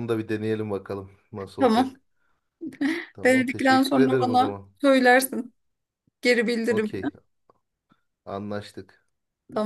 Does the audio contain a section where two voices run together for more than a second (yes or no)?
yes